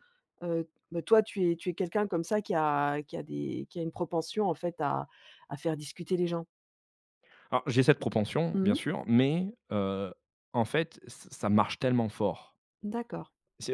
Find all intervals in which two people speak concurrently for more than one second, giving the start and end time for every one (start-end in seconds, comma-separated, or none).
none